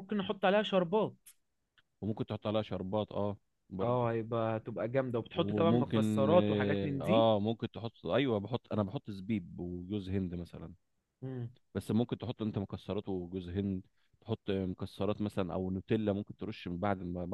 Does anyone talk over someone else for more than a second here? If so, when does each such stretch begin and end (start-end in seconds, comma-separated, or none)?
5.3-7.0